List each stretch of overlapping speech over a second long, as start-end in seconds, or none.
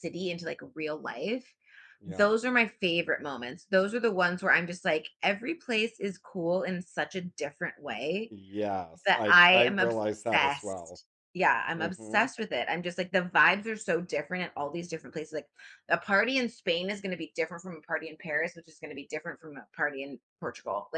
9.1-11.0